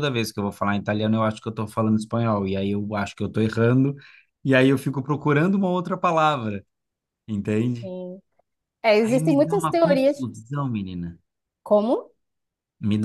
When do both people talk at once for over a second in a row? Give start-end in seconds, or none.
9.0-10.2